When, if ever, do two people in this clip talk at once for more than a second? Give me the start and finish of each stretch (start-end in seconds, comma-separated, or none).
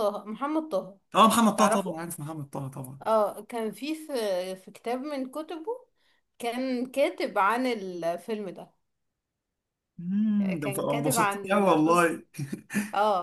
10.4-12.1